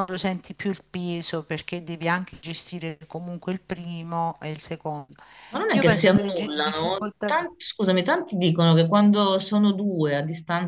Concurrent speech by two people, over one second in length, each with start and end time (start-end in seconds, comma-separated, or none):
5.7-7.3